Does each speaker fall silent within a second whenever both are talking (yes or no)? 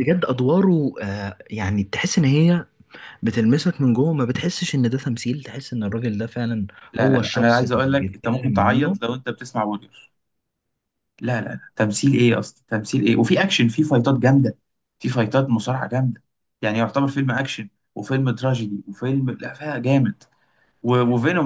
no